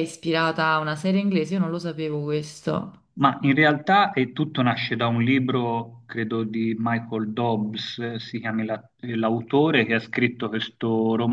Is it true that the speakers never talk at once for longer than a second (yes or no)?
yes